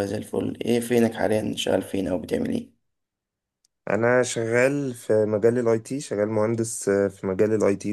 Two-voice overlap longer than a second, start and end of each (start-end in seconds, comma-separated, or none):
none